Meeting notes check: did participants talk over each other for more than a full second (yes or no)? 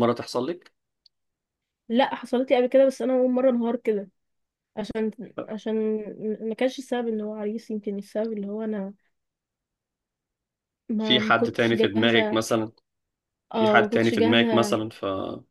yes